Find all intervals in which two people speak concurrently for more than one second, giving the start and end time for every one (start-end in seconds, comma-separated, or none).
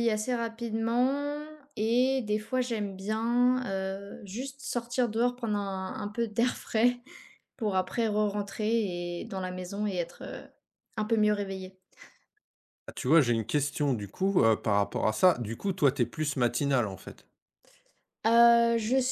none